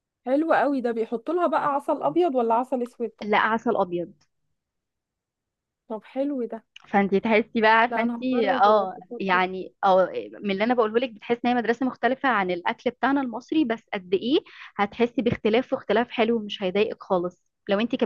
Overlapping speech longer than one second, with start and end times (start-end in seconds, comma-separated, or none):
7.9-9.5